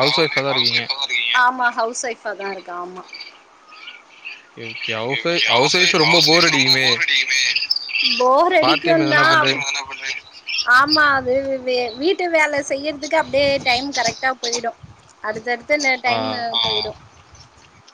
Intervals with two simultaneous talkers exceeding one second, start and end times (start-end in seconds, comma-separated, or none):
4.9-6.9